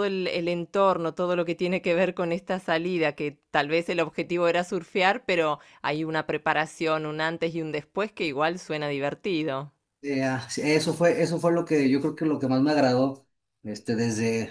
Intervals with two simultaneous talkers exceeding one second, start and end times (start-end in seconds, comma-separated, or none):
none